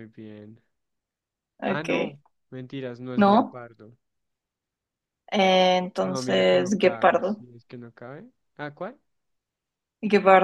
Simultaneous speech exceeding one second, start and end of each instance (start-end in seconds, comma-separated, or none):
6.0-7.5